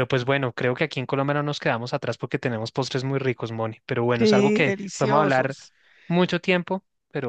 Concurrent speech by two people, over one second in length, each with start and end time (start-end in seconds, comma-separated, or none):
4.2-5.6